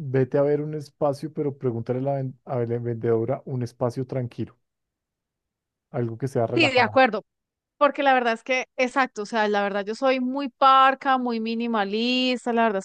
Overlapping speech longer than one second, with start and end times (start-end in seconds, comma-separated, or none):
none